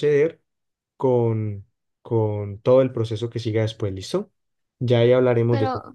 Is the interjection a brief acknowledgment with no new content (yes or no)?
yes